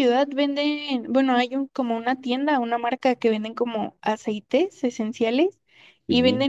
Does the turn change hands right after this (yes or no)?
no